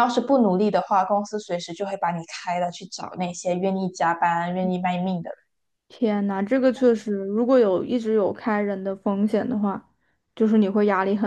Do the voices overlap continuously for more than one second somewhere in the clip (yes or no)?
no